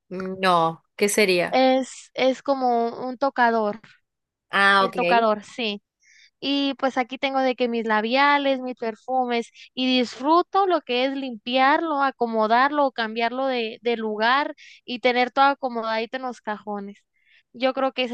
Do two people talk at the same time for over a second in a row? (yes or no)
no